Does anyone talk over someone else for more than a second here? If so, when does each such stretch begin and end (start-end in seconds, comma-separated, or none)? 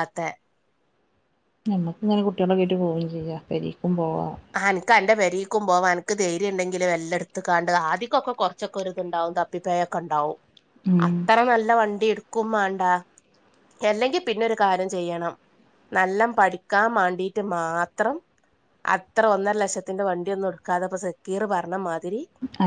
none